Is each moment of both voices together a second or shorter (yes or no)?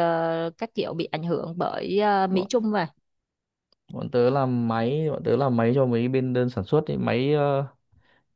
yes